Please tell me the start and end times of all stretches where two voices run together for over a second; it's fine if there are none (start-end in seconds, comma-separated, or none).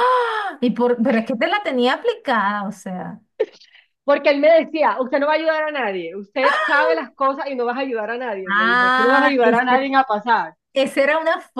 8.5-9.9